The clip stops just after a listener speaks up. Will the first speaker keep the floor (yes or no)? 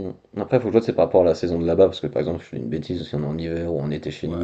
no